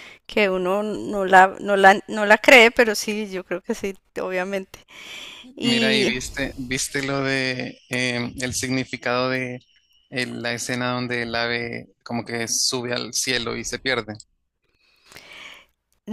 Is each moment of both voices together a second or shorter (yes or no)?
yes